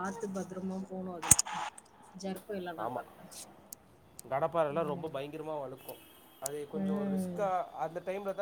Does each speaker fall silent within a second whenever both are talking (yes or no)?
yes